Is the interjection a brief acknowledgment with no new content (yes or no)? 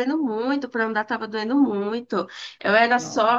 yes